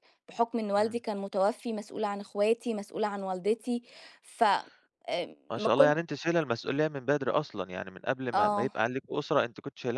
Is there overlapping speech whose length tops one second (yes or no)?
no